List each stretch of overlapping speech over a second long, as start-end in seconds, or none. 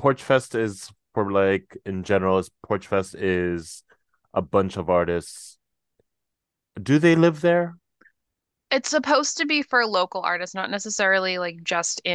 none